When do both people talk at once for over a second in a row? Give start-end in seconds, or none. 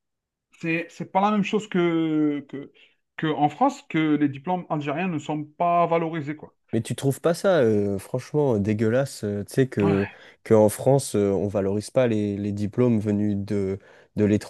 none